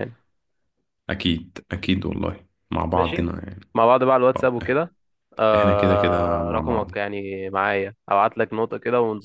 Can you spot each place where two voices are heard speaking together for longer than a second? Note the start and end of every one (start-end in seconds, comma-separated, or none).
5.5-6.9